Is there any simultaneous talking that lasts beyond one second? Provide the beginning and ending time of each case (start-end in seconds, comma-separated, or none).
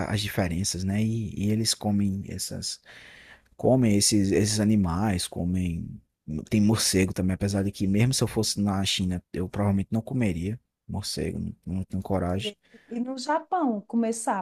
none